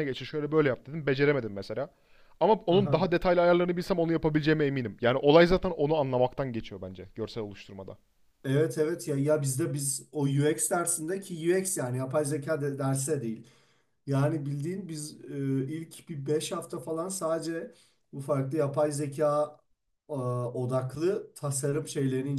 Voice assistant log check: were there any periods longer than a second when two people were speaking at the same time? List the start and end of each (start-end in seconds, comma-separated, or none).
none